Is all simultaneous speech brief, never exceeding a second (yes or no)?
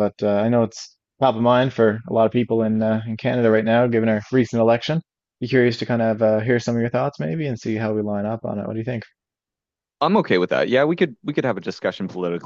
yes